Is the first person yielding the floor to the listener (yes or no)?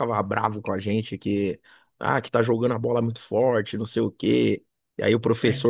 no